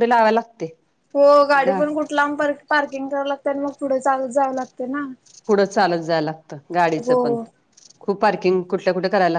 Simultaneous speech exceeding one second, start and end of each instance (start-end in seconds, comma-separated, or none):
none